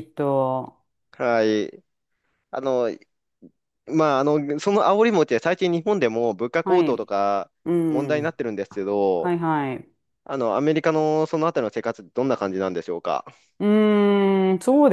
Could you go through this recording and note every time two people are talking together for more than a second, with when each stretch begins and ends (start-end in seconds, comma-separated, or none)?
none